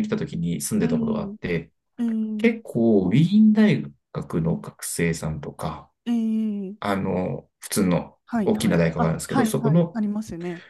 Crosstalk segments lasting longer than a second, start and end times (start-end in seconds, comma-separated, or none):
8.2-10.0